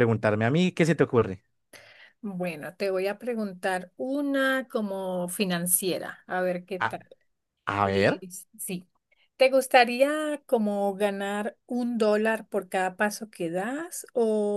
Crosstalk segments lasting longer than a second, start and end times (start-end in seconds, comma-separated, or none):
none